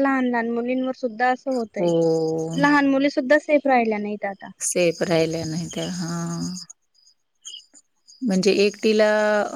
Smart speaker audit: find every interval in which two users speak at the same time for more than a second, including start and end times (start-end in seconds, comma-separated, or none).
none